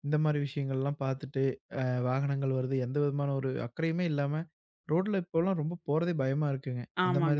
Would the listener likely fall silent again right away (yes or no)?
yes